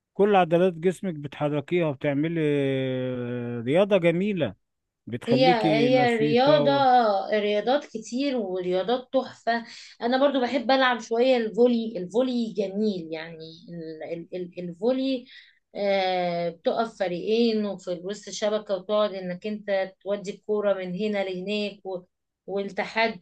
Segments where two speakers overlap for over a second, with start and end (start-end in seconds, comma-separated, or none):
5.3-6.7